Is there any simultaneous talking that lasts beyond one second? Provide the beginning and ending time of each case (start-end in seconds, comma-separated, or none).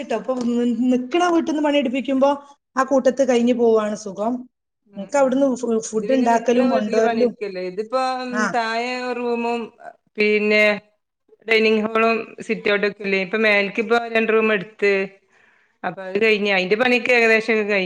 5.9-7.3